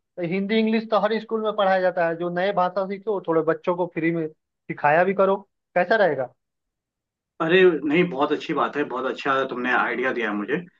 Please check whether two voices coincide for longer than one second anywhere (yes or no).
no